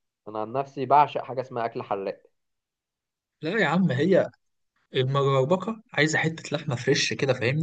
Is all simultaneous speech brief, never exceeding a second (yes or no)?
yes